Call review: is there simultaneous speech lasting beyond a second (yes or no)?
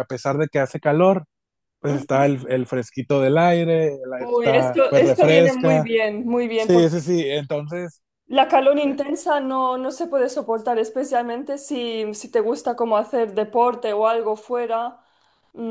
yes